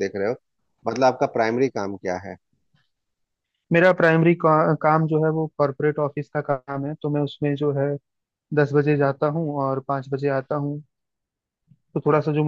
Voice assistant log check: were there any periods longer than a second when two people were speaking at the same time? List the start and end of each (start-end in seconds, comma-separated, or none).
none